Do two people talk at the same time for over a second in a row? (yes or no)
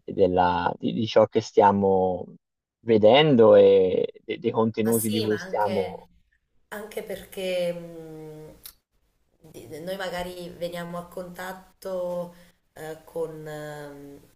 yes